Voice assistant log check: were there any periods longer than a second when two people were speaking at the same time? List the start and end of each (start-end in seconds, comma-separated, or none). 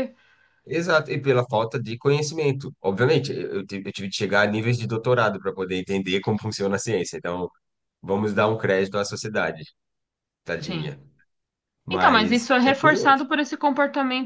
11.9-13.2